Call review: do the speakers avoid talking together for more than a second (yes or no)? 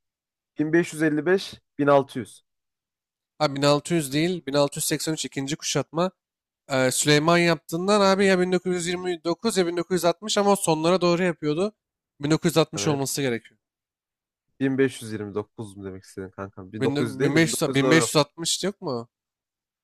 no